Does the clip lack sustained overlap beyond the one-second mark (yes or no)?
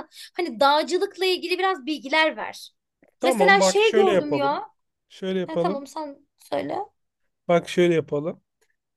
no